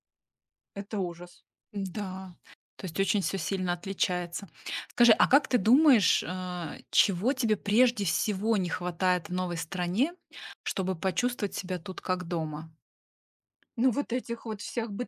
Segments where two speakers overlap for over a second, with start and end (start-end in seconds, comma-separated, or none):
none